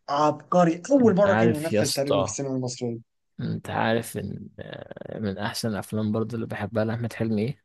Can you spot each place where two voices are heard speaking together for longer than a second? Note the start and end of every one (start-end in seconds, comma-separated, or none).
1.0-2.4